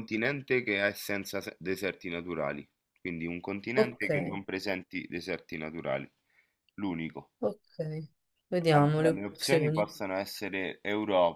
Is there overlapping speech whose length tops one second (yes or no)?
yes